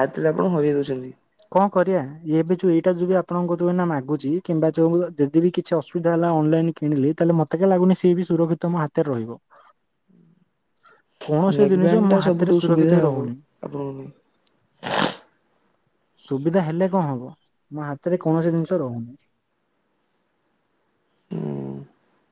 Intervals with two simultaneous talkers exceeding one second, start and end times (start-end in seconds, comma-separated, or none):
11.6-13.2